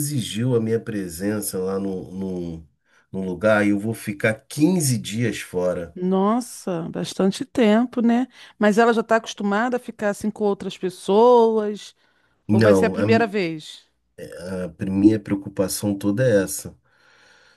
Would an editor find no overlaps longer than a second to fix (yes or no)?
yes